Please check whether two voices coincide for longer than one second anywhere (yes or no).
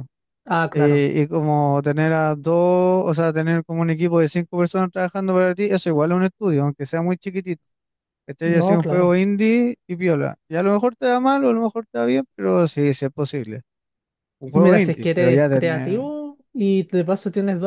yes